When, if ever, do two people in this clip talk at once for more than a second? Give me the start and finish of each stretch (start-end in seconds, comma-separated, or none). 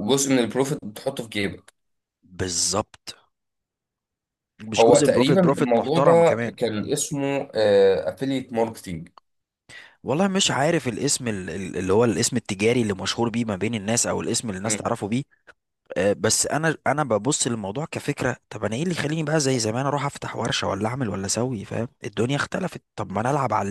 4.8-6.6